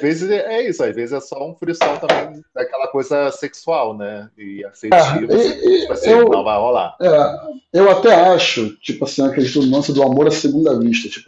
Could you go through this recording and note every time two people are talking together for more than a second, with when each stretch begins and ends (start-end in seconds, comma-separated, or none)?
4.9-6.5